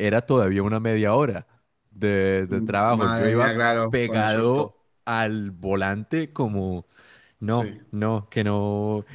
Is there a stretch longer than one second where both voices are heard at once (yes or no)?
yes